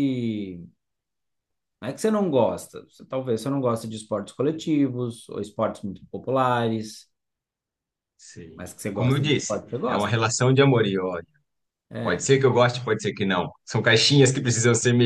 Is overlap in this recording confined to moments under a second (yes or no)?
no